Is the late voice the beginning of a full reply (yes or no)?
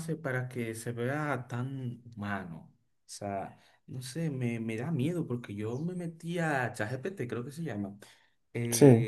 no